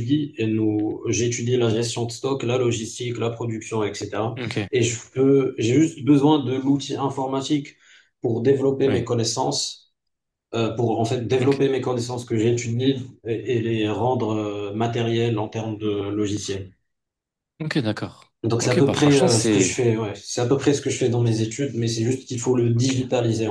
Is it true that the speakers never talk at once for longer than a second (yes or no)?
no